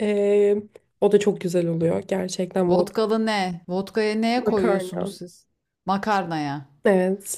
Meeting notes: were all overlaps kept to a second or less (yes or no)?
yes